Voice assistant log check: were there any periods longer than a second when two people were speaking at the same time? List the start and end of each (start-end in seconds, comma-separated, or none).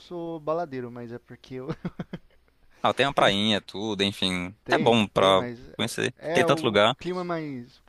4.6-7.0